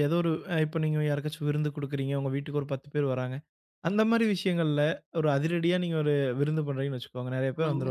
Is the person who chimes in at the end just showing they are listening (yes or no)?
yes